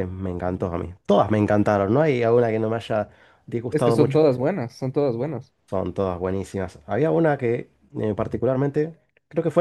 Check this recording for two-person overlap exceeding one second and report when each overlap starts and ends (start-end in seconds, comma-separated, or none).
none